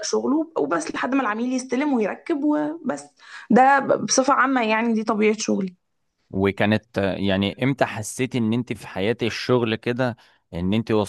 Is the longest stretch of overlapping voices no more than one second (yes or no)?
yes